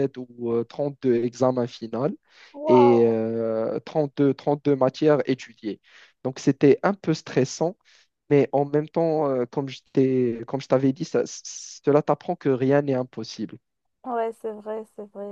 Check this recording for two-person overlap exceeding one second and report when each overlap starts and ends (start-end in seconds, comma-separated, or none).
none